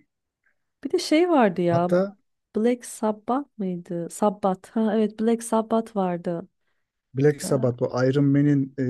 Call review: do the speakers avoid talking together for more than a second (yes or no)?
yes